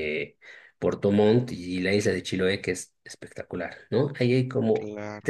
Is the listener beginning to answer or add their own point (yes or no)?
no